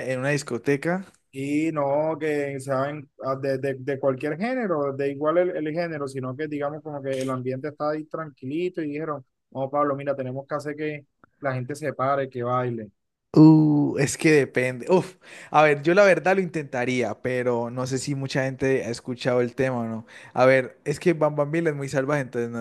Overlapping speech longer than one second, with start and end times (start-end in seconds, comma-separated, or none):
none